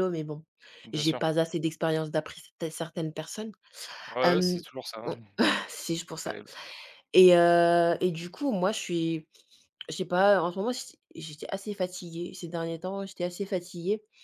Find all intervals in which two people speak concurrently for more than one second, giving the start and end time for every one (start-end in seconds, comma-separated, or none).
none